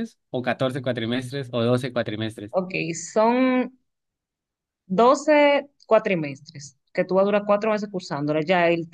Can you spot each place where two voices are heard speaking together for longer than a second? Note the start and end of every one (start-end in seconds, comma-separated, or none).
none